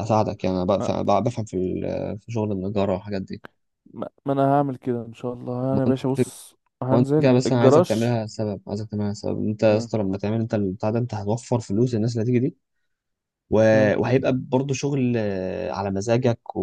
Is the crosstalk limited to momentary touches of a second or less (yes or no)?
no